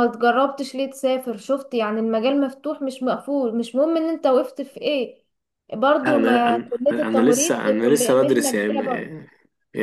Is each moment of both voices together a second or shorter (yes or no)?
no